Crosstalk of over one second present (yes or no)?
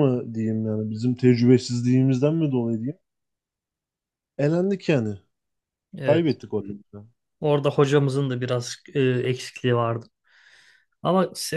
no